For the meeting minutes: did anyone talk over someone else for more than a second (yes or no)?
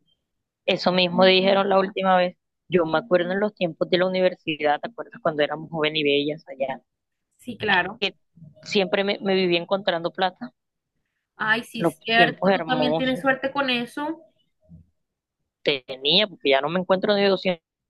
yes